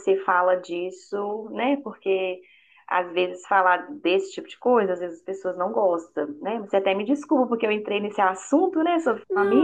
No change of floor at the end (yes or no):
no